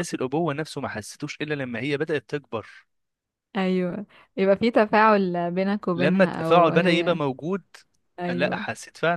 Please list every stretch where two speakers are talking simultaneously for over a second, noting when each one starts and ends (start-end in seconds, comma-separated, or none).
6.0-7.2